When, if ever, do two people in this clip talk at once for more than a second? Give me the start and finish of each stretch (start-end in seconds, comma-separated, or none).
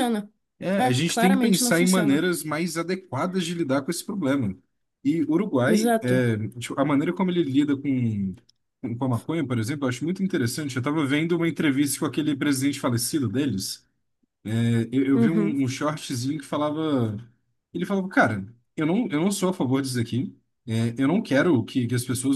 0.8-2.3